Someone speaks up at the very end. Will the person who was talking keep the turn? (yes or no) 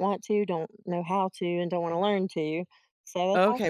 no